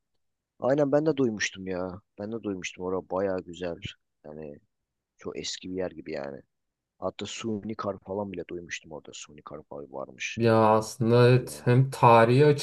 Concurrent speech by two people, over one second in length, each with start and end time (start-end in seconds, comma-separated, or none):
none